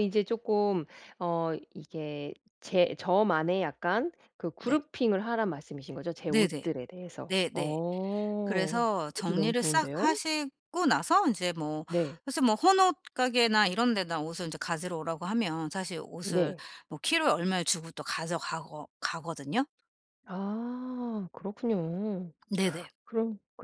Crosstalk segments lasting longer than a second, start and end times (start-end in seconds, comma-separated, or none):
8.4-10.2